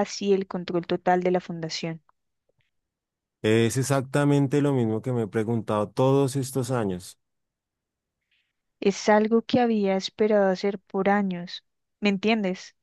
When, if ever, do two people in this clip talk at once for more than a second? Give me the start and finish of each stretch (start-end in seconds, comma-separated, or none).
none